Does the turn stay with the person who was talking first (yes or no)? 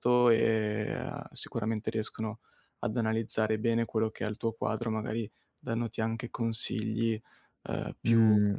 no